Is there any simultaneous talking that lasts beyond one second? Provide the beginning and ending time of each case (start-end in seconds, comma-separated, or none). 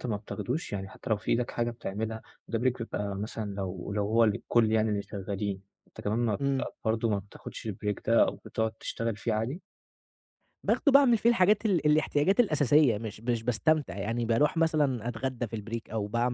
none